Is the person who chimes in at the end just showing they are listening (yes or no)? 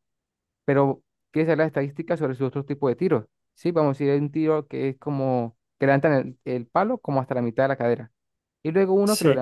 yes